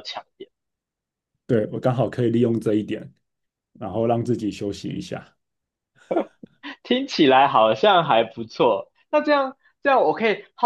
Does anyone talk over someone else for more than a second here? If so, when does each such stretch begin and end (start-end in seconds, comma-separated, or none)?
none